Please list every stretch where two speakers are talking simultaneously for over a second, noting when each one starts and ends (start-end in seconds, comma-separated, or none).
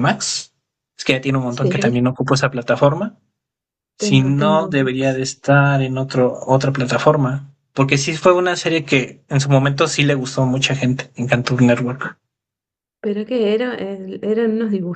4.0-5.2